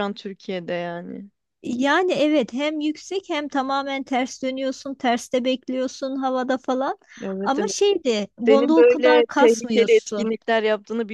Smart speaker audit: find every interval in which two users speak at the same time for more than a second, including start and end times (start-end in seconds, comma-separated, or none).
8.4-10.3